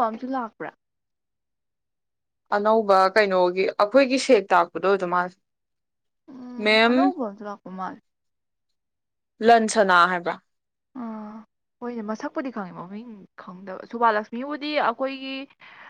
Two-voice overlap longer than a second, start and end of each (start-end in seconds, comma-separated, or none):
none